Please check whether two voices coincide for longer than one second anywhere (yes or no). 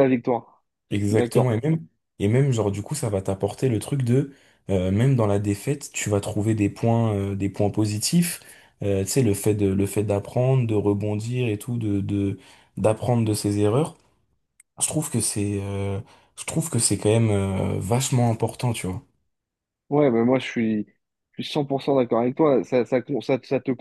no